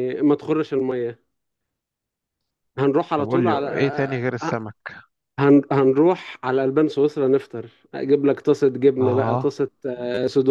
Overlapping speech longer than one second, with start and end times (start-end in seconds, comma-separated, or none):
3.2-4.5